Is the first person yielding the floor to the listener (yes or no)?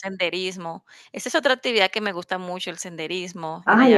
yes